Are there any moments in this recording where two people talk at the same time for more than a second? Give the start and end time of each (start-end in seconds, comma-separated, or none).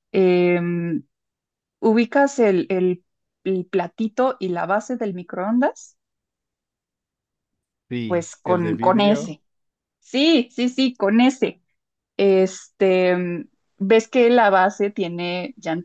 8.1-9.4